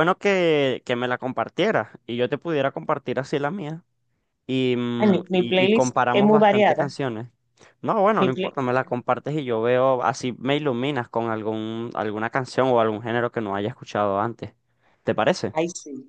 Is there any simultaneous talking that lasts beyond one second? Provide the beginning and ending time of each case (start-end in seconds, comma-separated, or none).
5.0-7.0